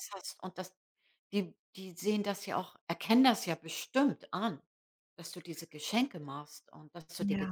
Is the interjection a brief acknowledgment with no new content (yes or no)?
no